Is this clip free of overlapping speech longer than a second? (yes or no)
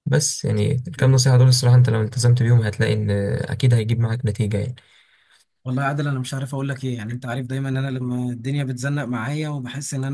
yes